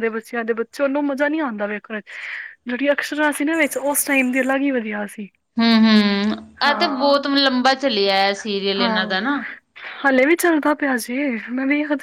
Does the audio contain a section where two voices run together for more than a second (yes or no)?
no